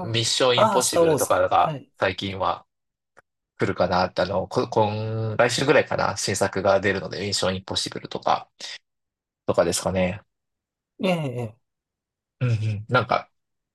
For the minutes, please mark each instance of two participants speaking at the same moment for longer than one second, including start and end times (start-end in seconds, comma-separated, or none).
0.5-1.9